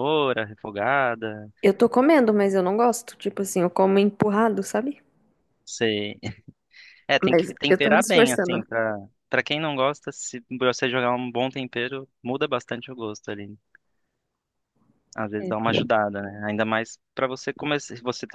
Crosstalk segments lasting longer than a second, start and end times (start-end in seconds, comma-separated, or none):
7.2-8.6